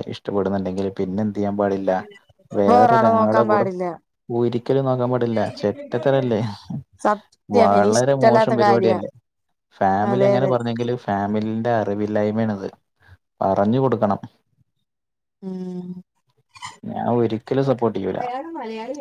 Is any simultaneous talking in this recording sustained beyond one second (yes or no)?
yes